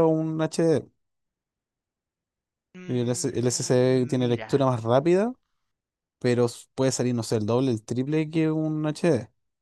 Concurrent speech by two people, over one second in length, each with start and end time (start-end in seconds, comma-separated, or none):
2.9-4.5